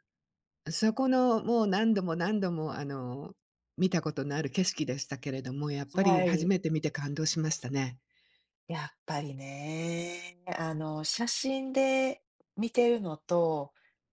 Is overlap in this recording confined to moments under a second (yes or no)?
yes